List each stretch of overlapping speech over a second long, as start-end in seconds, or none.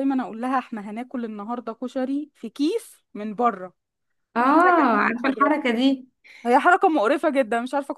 4.4-5.6